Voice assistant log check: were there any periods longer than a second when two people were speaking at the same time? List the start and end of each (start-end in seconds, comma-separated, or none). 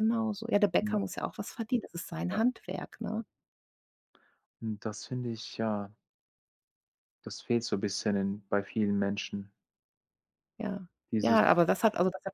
none